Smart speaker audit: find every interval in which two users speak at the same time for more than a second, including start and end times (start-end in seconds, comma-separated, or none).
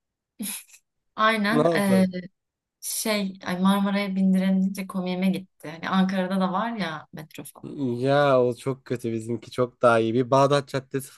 none